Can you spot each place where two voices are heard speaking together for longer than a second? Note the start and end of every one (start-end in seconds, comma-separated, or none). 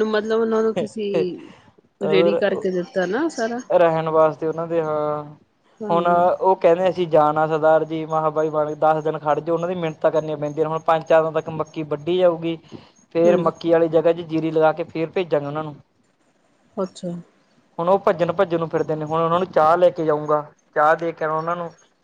none